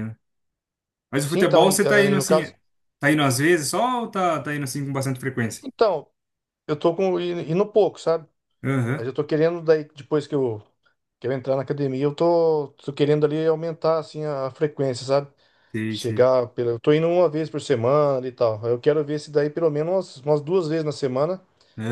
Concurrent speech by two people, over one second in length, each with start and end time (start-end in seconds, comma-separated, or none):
1.2-2.5